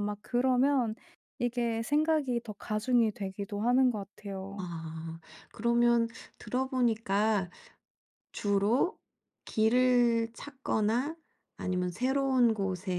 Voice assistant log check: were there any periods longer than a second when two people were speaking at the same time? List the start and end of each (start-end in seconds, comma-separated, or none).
none